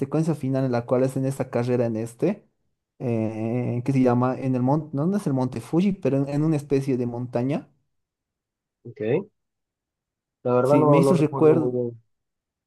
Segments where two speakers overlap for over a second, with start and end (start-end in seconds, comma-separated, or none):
10.6-11.8